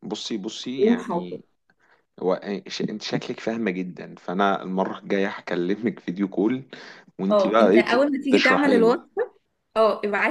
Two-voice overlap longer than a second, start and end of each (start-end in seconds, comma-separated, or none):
7.3-9.0